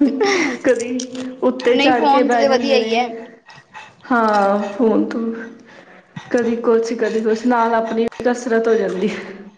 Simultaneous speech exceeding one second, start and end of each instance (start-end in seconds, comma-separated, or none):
1.7-3.1